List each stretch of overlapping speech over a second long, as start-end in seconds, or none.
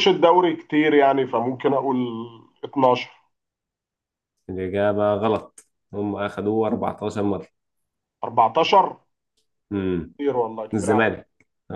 none